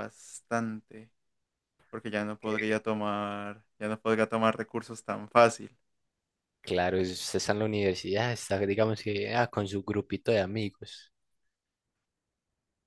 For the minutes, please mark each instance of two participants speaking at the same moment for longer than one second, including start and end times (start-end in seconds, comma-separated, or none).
none